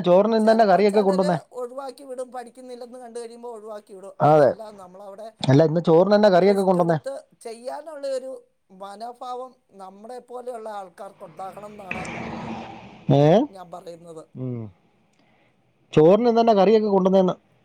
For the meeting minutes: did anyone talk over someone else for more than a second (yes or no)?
no